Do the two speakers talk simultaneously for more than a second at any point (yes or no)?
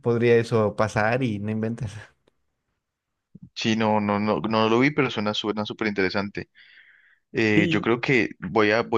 no